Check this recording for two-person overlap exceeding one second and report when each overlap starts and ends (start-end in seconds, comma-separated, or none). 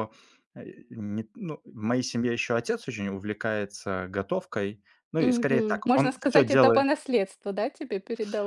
5.2-6.9